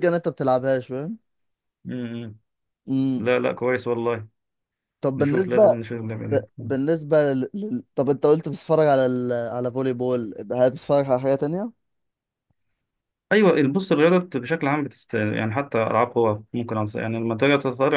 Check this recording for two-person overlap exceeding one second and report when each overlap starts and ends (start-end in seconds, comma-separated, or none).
none